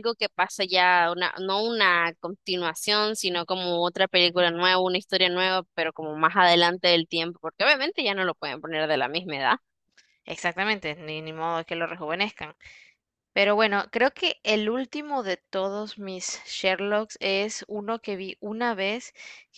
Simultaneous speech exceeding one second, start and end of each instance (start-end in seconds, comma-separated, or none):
none